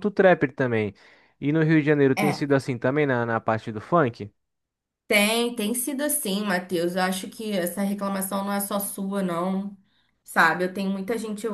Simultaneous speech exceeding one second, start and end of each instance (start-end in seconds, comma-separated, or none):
none